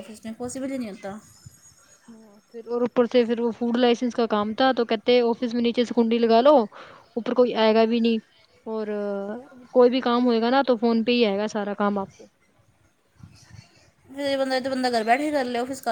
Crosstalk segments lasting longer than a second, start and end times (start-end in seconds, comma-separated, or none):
none